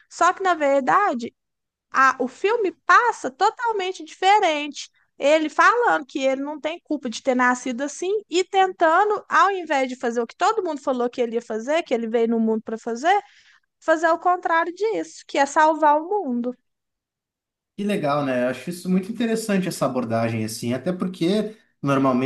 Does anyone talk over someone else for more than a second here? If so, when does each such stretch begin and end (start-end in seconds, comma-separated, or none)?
none